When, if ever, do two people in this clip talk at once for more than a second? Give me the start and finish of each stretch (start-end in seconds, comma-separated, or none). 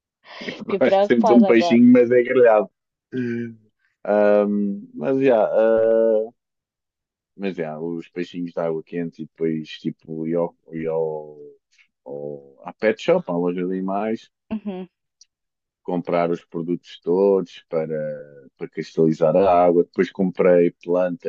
0.6-1.8